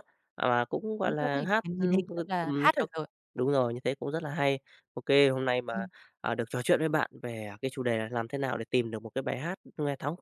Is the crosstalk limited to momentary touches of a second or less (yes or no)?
no